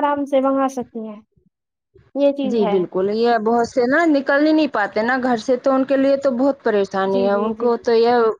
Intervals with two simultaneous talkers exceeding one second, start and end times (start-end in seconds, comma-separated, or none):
none